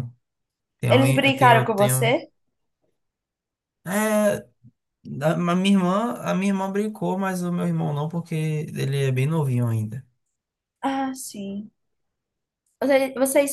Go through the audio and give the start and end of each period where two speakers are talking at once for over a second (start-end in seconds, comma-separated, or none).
0.9-2.2